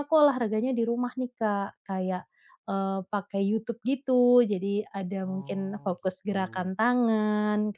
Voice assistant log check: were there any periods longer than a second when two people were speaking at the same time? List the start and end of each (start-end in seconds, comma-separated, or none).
5.2-6.7